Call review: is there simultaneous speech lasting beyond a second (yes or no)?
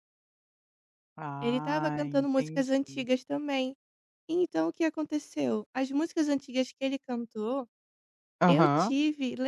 yes